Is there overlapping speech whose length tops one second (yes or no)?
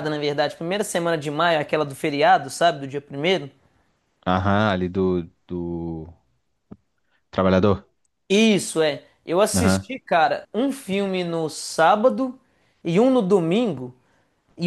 no